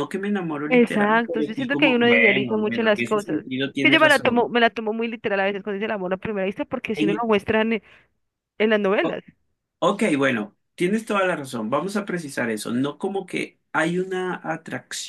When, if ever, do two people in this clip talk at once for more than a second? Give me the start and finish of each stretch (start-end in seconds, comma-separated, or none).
0.7-4.5